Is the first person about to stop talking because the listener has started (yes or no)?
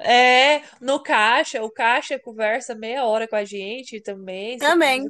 no